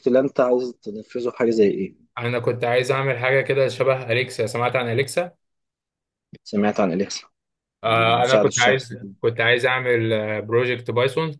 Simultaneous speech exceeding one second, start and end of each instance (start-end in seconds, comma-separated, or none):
7.8-9.2